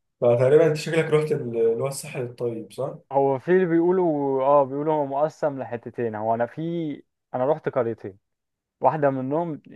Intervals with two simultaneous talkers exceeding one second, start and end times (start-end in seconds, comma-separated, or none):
none